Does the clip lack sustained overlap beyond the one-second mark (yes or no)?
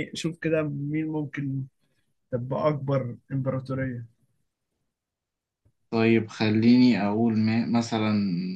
yes